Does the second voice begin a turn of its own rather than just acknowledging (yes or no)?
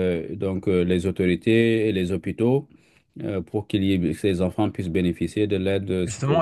yes